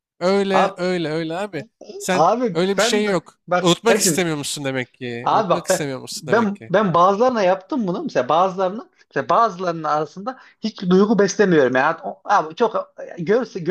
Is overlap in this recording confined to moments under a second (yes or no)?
no